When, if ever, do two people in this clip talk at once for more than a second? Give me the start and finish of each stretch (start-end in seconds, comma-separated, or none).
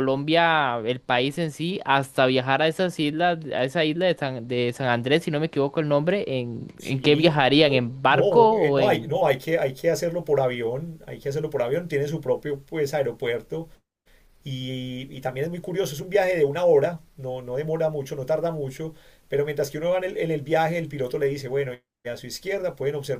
6.8-9.1